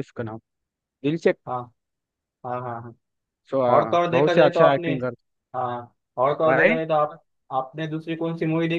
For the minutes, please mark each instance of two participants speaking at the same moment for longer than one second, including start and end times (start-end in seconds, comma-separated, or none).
3.7-4.9